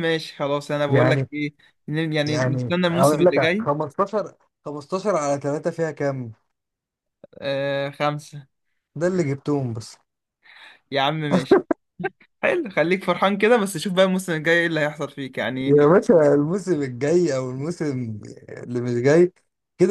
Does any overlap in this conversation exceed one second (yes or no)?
yes